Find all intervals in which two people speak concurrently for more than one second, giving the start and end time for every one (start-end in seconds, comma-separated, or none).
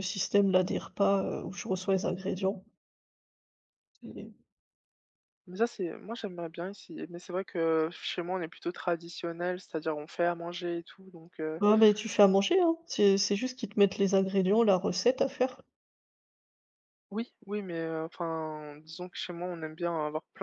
none